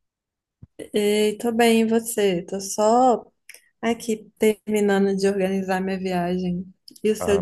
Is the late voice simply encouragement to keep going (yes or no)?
no